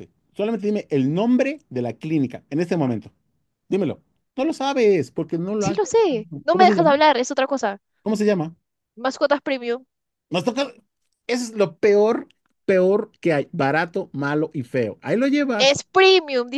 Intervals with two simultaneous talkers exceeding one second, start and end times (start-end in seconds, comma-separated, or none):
5.6-7.0